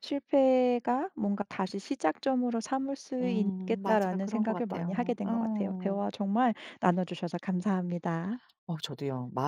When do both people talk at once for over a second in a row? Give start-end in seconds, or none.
3.2-6.1